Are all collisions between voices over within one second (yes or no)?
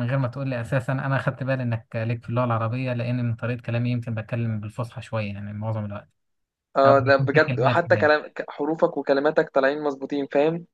no